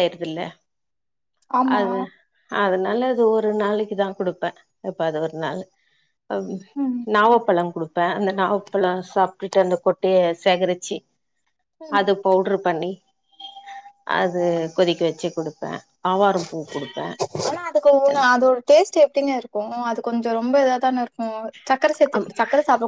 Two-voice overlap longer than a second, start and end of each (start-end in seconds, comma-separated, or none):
none